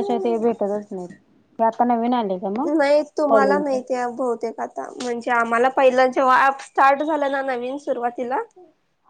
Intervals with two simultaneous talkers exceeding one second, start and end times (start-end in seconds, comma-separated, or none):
none